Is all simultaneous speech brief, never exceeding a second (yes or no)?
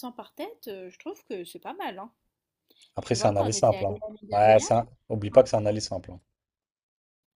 no